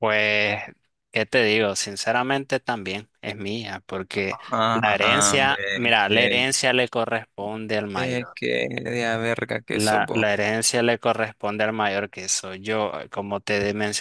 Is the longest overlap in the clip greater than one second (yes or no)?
yes